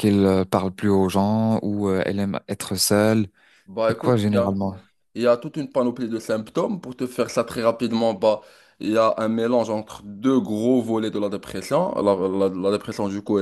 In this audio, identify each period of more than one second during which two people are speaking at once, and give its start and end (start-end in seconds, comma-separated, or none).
none